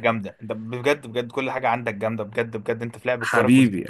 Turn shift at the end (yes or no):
yes